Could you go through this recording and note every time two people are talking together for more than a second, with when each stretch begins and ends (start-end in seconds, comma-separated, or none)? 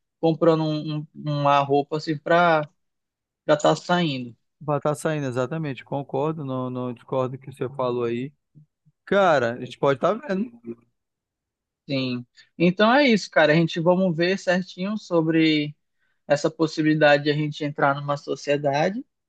none